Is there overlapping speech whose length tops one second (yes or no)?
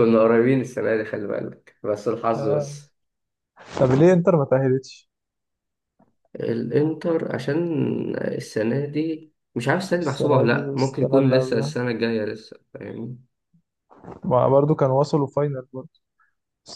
yes